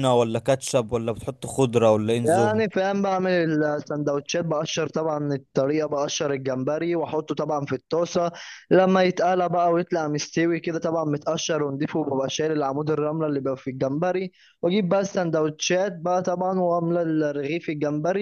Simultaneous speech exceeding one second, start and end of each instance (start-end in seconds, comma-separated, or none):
none